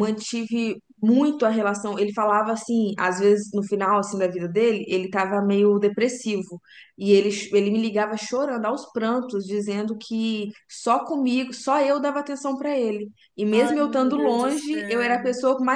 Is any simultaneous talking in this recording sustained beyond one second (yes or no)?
yes